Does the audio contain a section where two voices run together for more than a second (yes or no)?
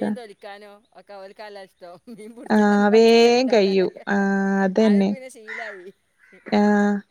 yes